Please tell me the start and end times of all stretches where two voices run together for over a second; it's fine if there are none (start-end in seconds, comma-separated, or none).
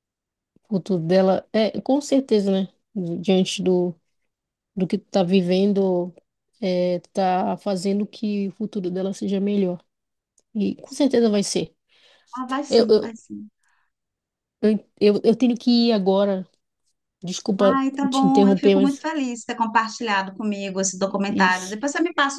17.6-19.1